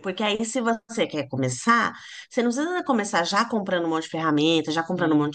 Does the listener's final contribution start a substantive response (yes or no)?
no